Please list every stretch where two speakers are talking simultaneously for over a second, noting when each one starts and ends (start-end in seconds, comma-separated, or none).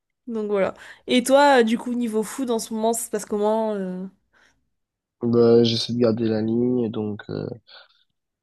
none